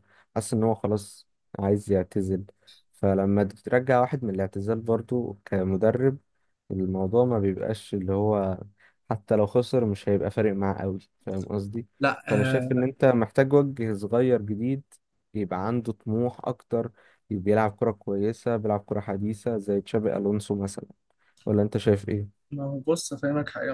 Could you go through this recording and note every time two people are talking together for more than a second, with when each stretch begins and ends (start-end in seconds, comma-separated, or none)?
none